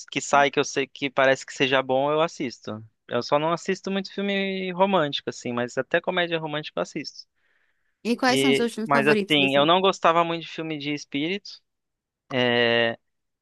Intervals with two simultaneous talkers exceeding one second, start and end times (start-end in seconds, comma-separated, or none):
8.3-9.7